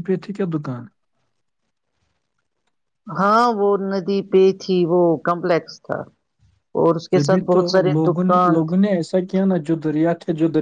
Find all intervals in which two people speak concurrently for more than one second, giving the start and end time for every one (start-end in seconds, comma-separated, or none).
none